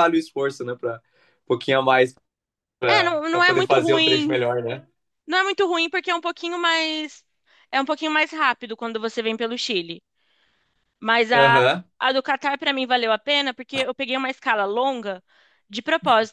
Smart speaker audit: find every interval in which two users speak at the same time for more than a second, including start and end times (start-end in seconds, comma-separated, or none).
2.9-4.4